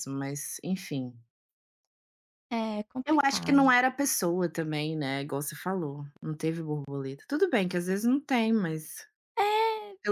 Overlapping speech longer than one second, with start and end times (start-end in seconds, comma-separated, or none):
none